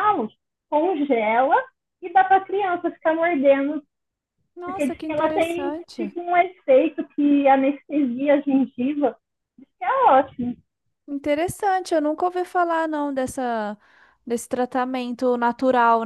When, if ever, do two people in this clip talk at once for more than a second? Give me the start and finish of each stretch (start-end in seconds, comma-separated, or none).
4.6-6.1